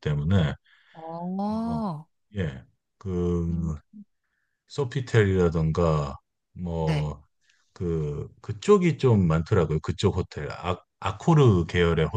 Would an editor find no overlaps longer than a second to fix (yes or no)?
yes